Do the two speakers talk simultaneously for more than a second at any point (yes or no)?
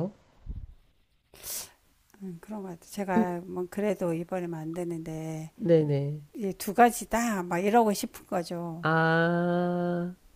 no